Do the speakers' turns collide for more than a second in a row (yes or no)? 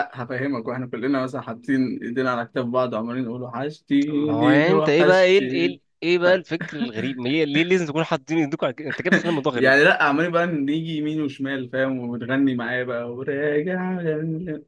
yes